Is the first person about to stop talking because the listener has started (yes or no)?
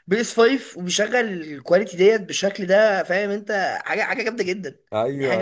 yes